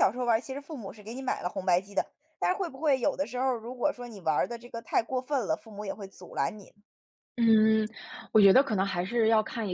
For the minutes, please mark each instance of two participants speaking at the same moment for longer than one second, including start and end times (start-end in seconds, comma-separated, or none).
none